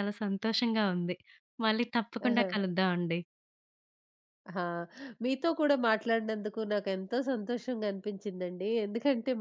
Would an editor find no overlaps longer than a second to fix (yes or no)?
yes